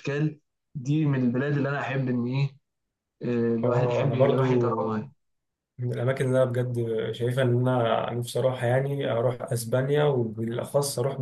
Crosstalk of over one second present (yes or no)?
yes